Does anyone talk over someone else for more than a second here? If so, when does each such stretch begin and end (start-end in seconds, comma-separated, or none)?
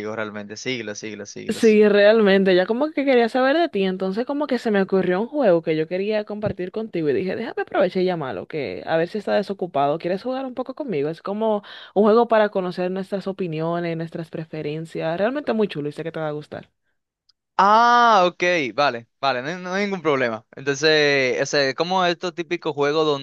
none